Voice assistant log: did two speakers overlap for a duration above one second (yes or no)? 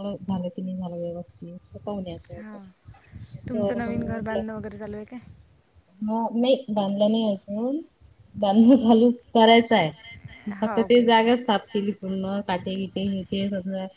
no